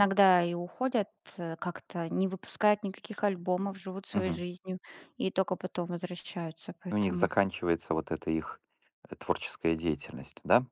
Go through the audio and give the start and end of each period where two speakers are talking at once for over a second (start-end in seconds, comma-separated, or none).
none